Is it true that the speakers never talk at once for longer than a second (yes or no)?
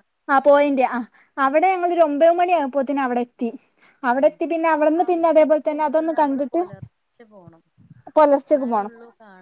yes